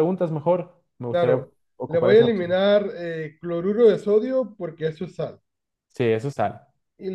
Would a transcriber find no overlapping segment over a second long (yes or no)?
no